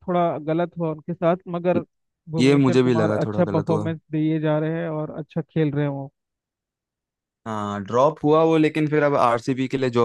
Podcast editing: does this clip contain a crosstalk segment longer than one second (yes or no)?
yes